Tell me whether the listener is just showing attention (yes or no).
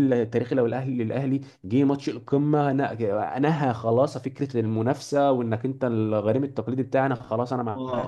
no